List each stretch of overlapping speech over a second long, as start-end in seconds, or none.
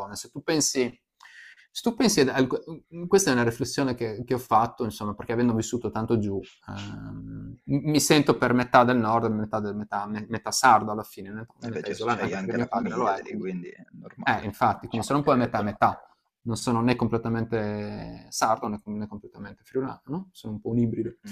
11.7-13.5, 14.2-15.7